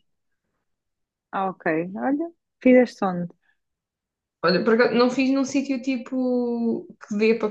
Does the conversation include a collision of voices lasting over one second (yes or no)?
no